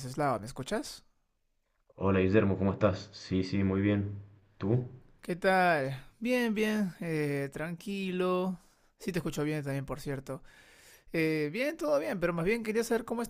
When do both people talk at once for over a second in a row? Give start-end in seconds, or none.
none